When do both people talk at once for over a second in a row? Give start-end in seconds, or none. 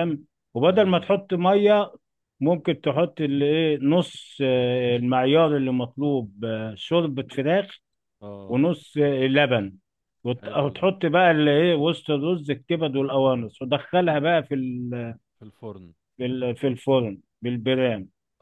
none